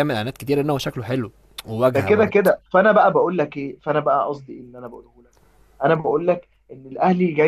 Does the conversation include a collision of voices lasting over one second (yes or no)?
no